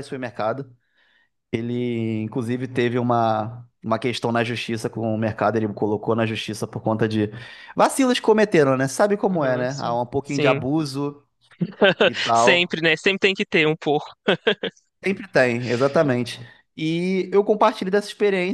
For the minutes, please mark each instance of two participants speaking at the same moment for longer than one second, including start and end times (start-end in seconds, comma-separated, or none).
9.3-10.7